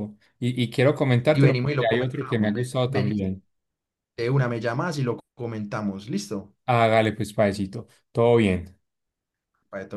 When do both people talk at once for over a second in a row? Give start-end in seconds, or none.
1.3-3.2